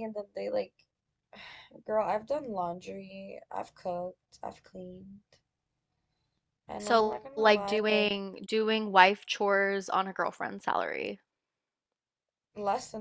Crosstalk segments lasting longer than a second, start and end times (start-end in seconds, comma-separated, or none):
6.8-8.2